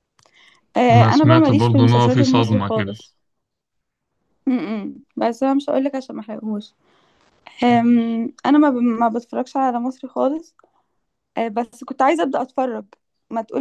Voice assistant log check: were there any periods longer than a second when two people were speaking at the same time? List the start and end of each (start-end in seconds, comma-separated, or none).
0.9-3.0